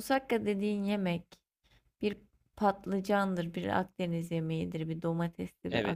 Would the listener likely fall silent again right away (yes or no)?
yes